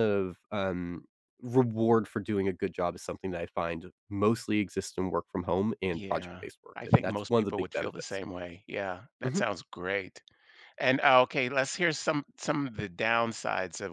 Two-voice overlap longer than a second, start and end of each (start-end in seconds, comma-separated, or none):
5.9-8.2